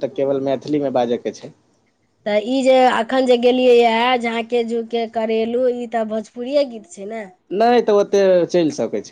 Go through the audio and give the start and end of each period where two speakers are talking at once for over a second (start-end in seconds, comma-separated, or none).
none